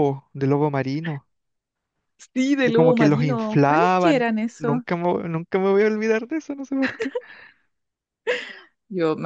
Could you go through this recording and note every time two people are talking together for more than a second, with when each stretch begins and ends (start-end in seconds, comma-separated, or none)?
2.6-4.8